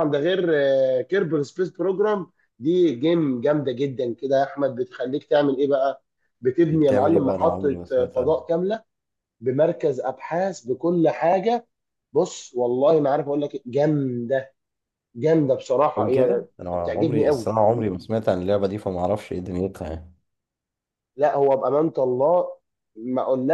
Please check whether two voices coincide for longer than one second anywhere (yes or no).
yes